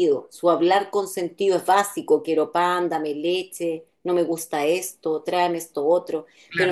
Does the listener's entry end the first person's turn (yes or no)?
yes